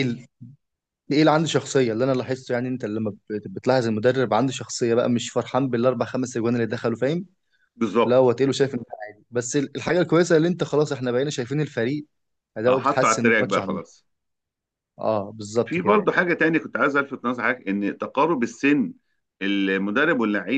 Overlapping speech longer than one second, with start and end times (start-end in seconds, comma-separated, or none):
12.7-14.0